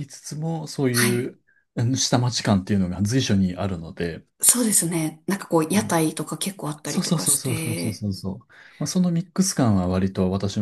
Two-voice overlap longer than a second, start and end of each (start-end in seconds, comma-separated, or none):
6.8-8.0